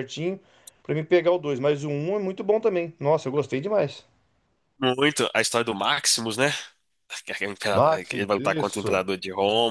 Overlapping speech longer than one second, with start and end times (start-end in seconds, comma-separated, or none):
7.7-9.0